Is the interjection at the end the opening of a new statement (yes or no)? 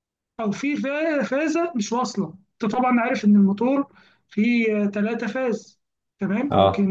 no